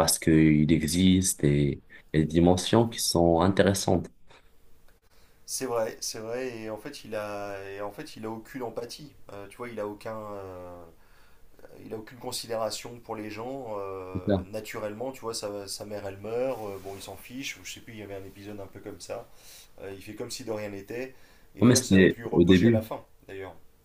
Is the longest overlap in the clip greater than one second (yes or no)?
yes